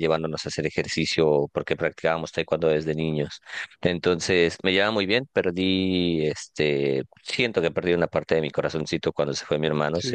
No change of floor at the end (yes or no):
yes